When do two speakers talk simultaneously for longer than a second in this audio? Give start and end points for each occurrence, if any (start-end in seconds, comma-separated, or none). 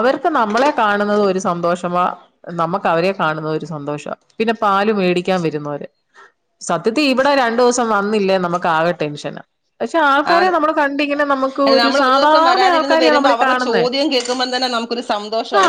11.7-13.8